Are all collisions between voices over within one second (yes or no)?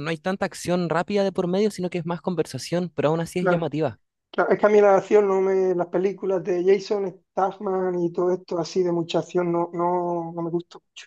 yes